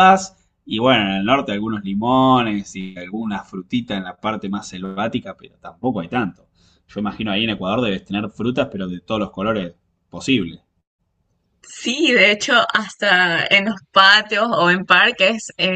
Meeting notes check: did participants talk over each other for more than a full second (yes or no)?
no